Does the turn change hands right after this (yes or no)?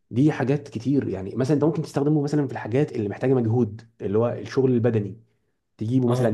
no